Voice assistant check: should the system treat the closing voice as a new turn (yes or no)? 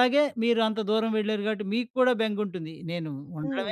no